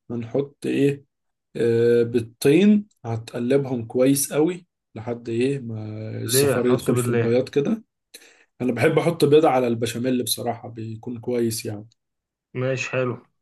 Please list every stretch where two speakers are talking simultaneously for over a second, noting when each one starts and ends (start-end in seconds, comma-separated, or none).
6.2-7.4